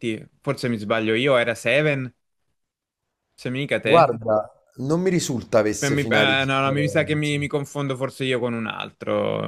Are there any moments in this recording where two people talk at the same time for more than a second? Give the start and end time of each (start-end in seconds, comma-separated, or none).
5.8-7.4